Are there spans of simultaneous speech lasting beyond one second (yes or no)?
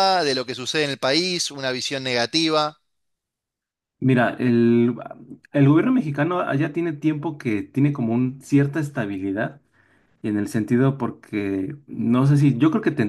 no